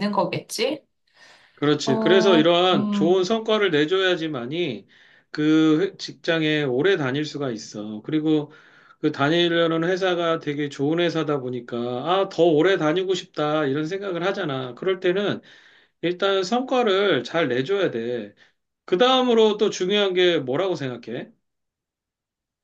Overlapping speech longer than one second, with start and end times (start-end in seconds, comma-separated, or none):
1.8-3.4